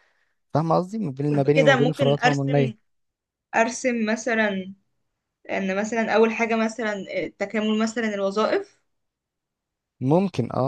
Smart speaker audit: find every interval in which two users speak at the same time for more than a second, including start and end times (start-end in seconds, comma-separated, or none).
1.5-2.7